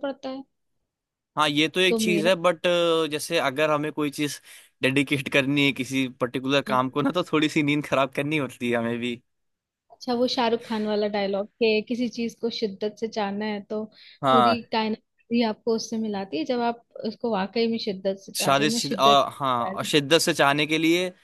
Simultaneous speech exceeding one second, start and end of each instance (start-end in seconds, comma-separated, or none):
18.4-20.0